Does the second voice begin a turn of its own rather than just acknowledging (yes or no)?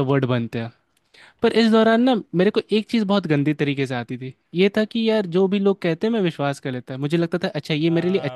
yes